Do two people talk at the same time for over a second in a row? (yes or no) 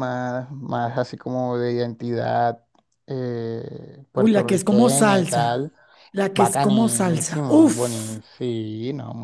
yes